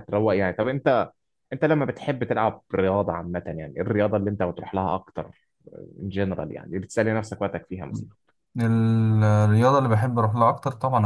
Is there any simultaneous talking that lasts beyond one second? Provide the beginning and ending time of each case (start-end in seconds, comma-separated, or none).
none